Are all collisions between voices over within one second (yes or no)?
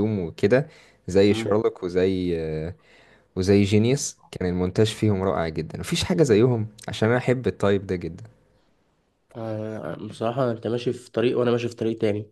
yes